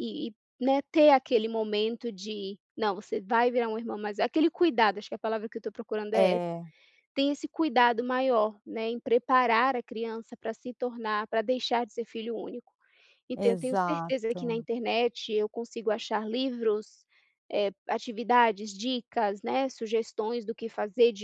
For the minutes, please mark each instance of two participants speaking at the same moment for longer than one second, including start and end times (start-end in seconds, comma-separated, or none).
13.4-14.6